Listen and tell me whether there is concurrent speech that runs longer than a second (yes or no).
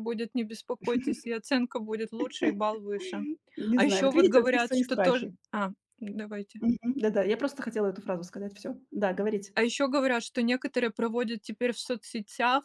yes